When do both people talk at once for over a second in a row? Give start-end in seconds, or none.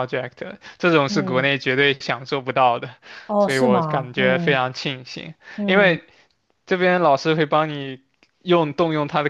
3.4-4.6